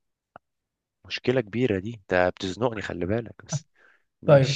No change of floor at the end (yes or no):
no